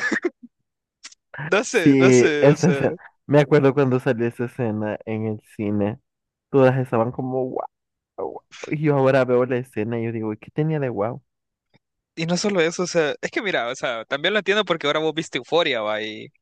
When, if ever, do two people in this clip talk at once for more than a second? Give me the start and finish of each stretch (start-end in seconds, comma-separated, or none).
1.7-3.0